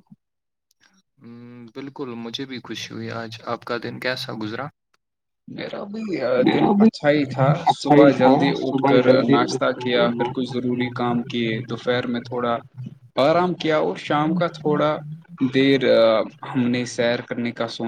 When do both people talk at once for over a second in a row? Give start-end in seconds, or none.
7.7-10.3